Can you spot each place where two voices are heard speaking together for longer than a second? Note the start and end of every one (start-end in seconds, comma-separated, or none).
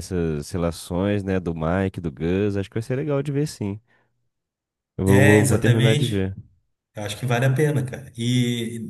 5.1-6.3